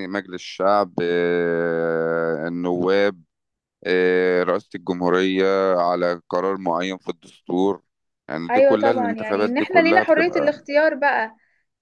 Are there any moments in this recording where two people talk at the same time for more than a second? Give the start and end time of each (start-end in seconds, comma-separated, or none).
8.5-10.5